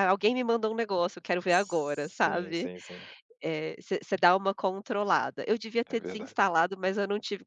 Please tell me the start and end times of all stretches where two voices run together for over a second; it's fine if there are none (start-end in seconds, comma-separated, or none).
1.5-2.7